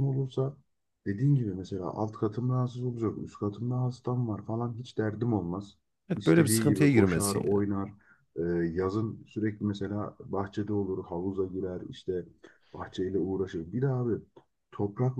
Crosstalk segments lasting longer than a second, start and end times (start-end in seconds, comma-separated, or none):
6.2-7.7